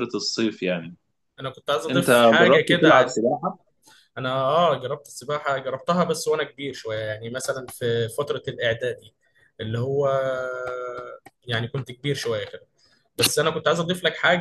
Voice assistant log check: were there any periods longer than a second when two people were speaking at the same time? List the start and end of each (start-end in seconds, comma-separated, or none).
1.9-3.1